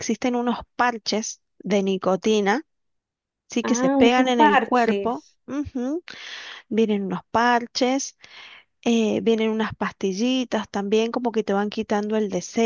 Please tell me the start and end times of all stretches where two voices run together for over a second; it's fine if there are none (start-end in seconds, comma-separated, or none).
3.6-5.4